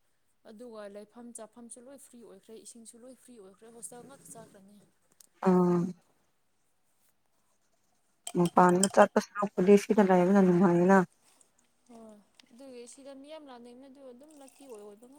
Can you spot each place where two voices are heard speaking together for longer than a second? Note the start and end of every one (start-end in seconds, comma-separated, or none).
none